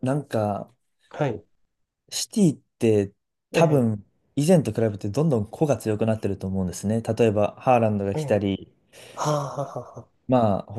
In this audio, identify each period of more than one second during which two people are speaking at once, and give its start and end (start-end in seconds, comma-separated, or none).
none